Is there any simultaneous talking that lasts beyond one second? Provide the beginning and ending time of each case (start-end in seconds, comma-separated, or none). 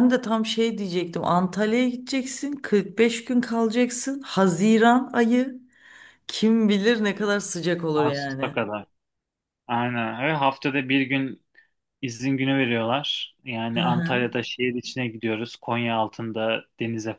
none